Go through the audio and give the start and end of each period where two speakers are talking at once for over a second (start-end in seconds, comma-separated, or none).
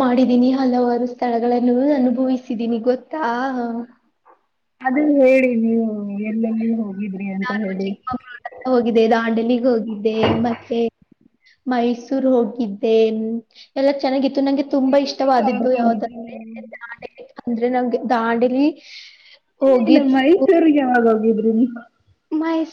14.8-16.4